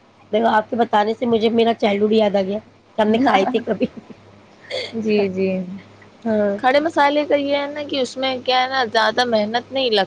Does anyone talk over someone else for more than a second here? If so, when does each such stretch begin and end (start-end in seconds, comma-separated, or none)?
none